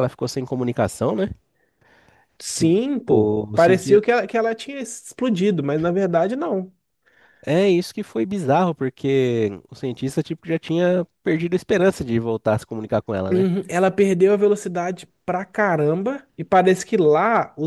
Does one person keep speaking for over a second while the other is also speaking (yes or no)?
yes